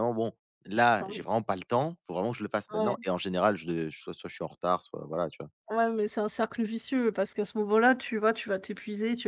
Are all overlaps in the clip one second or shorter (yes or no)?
yes